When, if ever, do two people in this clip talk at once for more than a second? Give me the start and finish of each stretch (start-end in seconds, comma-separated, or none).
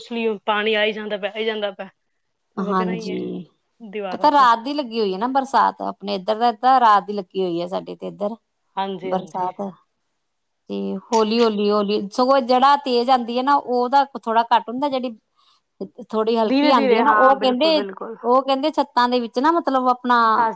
16.5-17.8